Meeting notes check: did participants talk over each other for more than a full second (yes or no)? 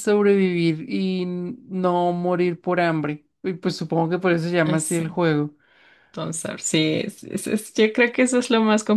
no